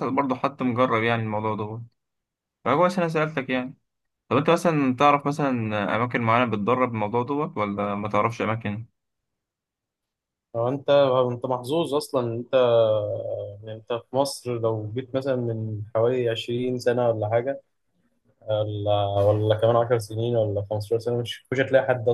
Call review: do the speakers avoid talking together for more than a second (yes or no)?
yes